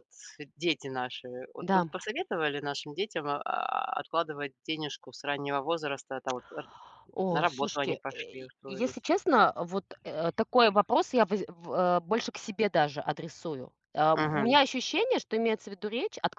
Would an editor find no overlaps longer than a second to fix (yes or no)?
no